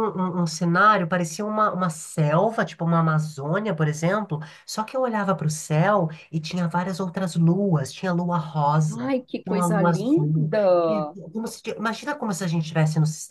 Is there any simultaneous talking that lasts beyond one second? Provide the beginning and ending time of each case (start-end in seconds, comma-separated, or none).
8.9-11.2